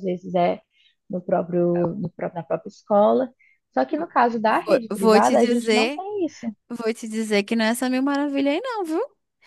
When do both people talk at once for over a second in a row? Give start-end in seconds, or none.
4.4-6.0